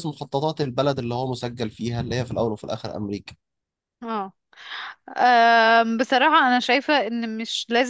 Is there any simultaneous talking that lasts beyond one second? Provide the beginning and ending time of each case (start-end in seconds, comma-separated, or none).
none